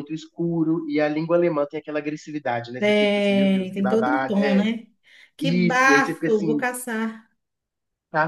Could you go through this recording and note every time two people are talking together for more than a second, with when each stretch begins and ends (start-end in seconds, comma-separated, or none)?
2.8-4.7, 5.4-6.7